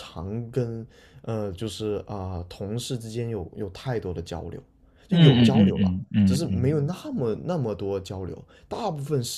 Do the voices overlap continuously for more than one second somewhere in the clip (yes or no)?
yes